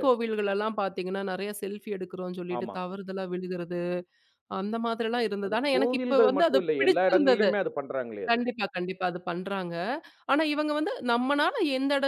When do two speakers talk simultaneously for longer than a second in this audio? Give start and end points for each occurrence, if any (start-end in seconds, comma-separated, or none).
5.5-7.5